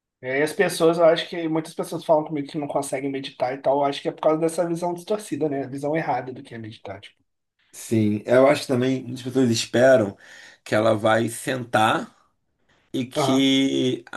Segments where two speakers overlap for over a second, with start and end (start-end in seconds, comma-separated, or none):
none